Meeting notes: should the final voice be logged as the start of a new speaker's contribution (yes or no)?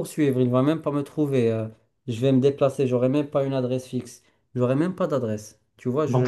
no